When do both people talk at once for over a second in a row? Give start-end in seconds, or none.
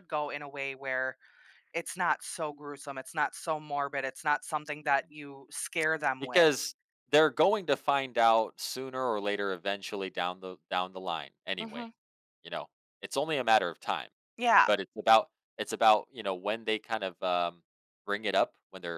none